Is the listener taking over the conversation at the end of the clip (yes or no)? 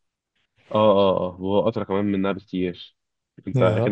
no